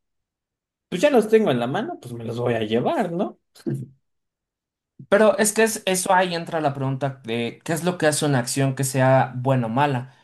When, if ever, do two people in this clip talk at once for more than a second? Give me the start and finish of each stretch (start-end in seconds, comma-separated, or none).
none